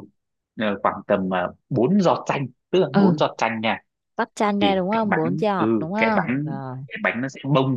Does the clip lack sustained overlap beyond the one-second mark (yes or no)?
no